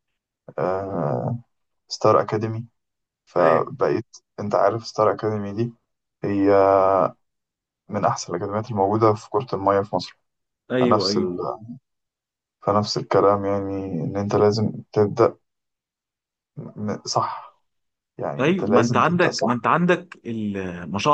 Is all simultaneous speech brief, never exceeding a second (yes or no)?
no